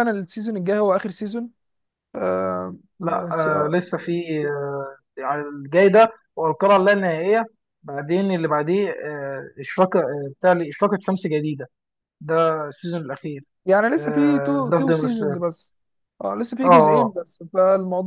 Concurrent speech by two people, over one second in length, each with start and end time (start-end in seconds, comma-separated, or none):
14.0-15.4